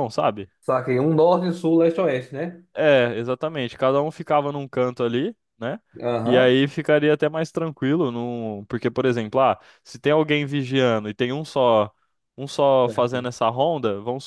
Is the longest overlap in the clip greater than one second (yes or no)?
no